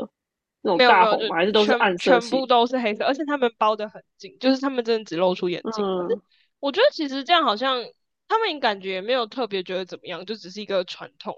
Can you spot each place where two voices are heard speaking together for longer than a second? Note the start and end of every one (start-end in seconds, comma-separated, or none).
0.7-2.5